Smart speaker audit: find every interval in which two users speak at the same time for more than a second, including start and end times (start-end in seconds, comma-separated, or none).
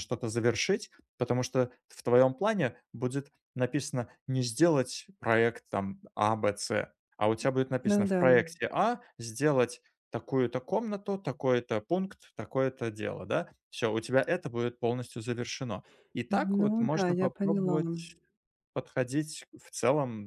16.6-17.8